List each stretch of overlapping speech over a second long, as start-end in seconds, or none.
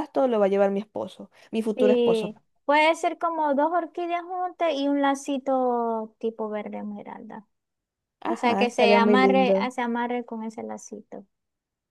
8.3-9.7